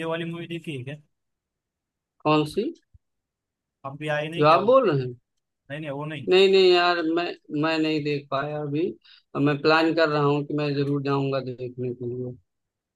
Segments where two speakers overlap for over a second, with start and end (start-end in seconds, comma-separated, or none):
none